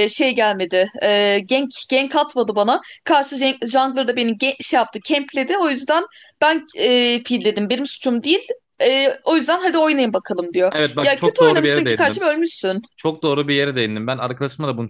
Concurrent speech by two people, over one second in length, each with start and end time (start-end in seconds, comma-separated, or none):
10.7-12.2